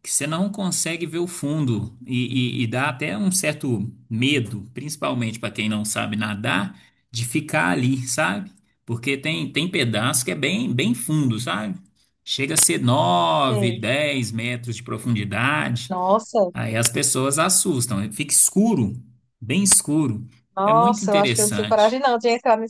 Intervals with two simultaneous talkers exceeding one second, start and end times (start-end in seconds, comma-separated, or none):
20.6-22.0